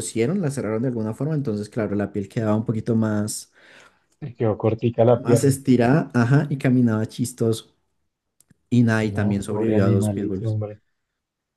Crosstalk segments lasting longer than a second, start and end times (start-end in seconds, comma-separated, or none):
9.0-10.6